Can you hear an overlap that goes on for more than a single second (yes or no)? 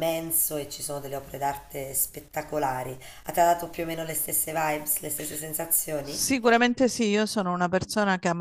no